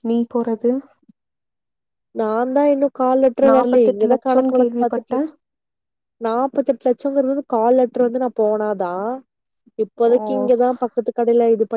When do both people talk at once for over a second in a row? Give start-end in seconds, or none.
3.5-5.2